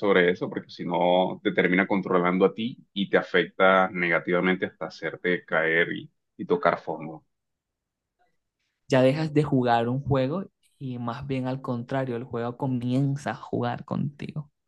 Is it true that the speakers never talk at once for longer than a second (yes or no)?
yes